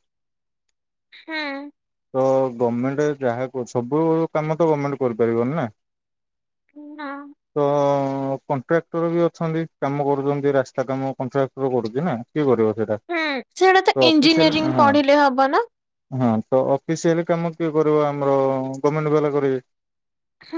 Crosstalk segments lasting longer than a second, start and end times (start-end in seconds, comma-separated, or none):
13.1-14.8